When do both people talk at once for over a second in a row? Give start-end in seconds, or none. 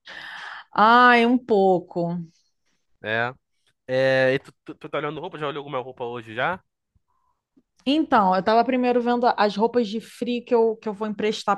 none